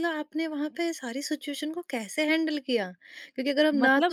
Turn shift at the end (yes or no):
no